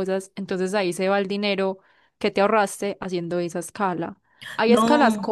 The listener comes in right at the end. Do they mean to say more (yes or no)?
no